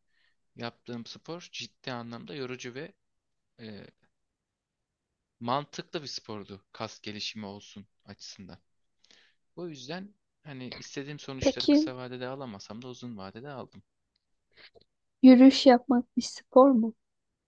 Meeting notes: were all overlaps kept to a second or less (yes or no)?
yes